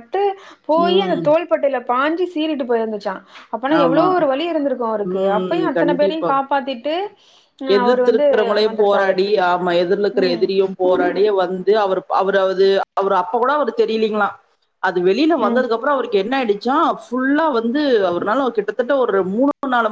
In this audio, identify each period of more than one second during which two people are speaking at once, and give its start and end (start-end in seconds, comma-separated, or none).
none